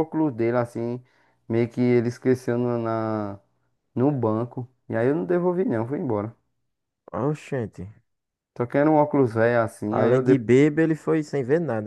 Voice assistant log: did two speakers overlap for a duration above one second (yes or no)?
no